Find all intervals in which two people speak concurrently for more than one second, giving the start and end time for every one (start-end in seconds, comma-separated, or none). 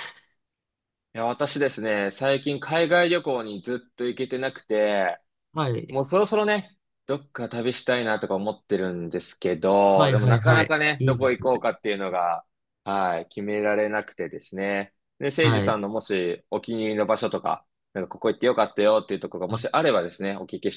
9.9-11.5